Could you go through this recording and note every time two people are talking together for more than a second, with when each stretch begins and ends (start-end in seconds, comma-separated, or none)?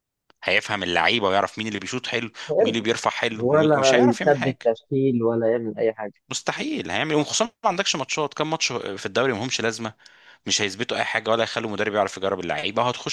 3.4-4.7